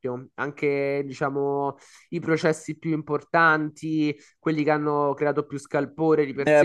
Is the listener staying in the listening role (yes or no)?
no